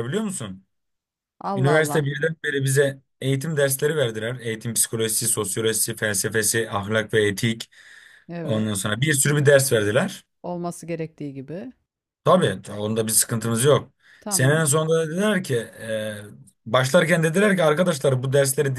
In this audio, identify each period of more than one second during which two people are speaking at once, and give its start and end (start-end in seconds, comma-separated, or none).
none